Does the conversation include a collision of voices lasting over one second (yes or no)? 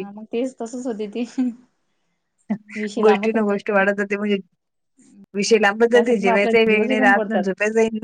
yes